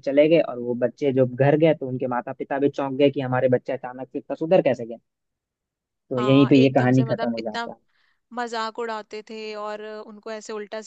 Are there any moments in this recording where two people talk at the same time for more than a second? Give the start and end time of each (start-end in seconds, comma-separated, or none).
6.2-7.7